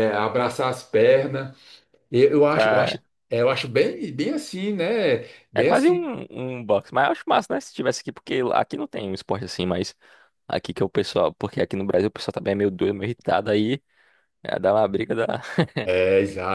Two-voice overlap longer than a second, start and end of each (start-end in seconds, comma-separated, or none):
none